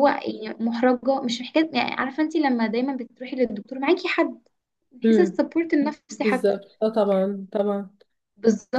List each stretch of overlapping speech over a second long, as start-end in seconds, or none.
none